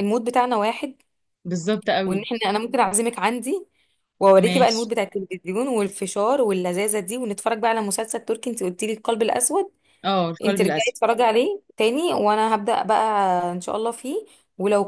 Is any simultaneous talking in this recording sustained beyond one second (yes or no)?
no